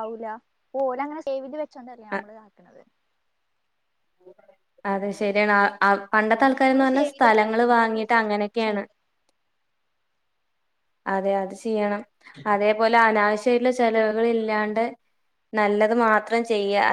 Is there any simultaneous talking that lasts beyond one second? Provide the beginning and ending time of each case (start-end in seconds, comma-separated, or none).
6.2-8.8